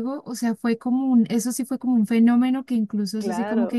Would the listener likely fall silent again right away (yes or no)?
yes